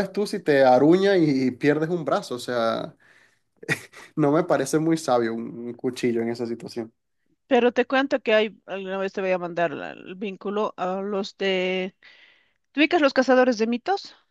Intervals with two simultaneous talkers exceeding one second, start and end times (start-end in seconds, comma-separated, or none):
none